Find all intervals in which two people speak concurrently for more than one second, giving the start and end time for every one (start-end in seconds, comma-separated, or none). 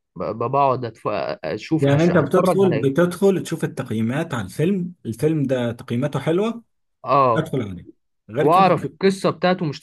1.8-3.1